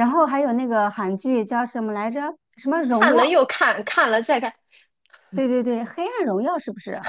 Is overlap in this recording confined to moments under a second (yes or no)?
yes